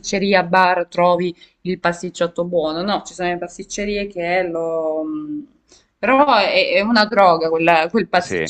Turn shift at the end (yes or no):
yes